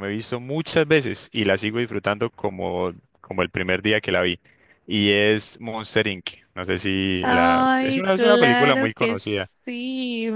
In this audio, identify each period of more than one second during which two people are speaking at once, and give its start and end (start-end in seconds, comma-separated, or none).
7.2-9.2